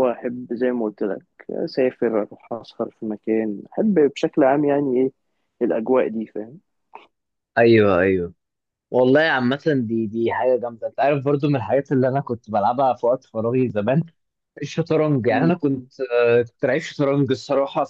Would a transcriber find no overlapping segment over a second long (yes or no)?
yes